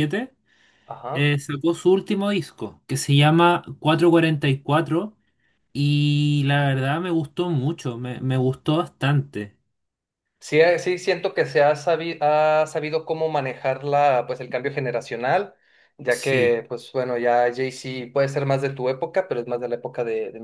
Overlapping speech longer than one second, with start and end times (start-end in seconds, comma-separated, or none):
none